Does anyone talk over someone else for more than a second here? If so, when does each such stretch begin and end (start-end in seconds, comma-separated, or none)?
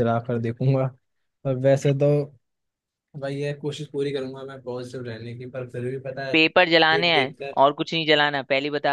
6.3-7.6